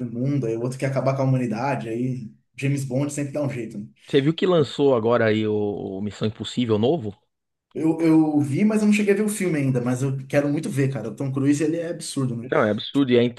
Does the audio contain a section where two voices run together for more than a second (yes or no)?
no